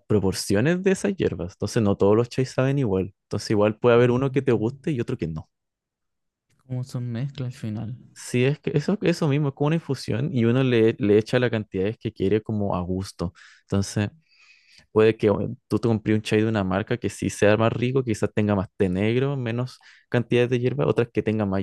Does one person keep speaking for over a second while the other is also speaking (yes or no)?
no